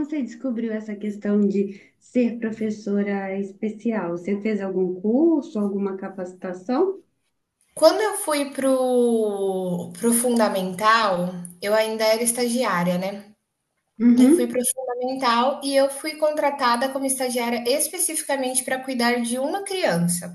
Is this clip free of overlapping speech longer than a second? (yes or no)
yes